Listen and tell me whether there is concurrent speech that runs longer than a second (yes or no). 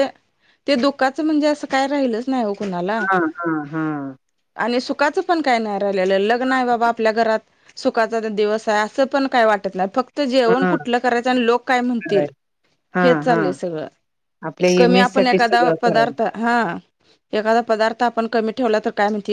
yes